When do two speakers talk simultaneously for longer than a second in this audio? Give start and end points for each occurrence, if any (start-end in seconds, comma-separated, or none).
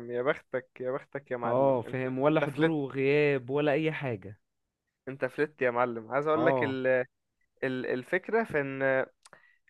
1.4-2.7